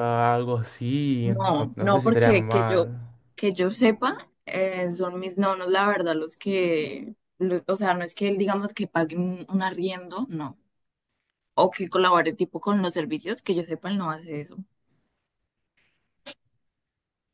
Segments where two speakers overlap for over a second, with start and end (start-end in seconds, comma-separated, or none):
1.2-2.9